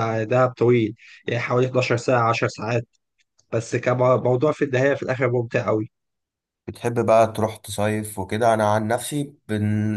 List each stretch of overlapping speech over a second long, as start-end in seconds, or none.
none